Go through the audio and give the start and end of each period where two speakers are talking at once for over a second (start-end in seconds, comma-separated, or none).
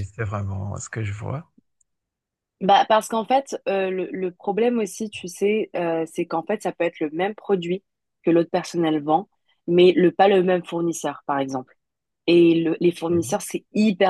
none